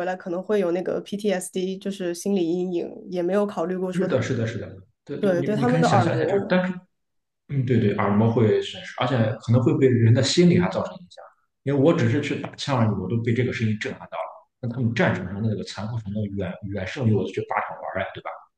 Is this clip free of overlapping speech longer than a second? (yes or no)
no